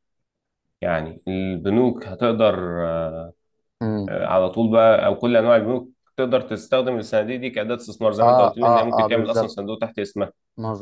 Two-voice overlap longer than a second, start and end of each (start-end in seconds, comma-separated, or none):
8.2-9.5